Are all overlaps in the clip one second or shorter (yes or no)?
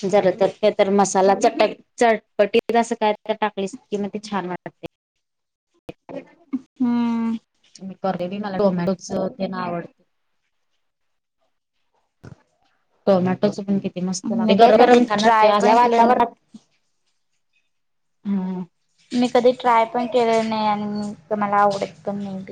no